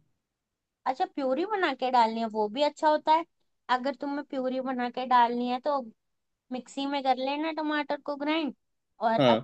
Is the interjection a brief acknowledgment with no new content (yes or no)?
yes